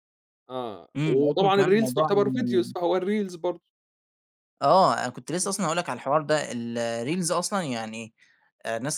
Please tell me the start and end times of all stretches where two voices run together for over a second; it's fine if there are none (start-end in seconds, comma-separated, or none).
1.0-2.7